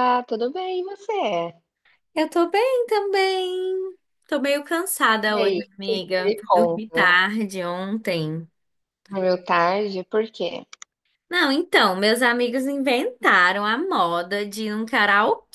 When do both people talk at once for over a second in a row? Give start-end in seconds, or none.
5.3-7.1